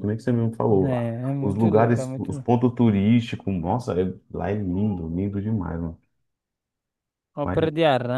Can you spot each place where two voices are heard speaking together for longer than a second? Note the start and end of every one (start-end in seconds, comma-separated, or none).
0.7-2.5